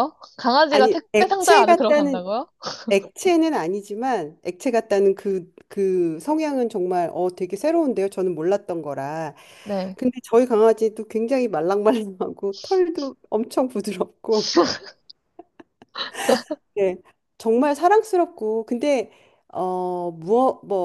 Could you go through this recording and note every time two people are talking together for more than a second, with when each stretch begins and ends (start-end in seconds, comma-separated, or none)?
0.7-2.2